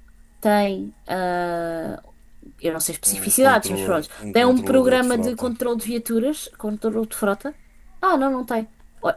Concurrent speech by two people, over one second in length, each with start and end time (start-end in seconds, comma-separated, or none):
3.1-5.5